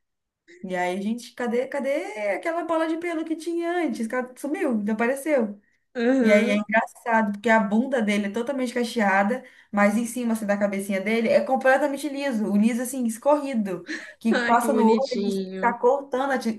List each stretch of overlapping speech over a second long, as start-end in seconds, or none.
14.3-15.8